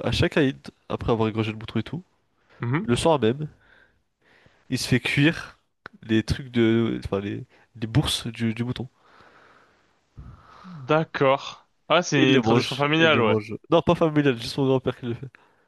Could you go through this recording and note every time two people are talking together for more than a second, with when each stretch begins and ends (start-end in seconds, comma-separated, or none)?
12.2-13.4